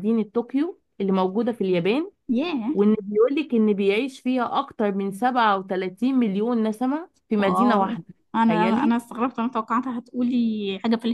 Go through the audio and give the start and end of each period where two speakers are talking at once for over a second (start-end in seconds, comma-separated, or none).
7.4-9.0